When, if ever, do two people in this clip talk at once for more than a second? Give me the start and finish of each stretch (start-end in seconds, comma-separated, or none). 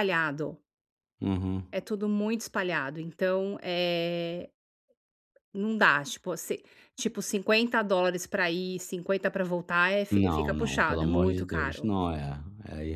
10.1-11.9